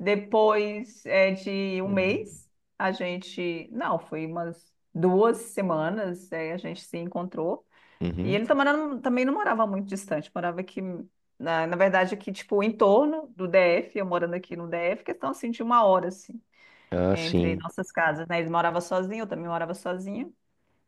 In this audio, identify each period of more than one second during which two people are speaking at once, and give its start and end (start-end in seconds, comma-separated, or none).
none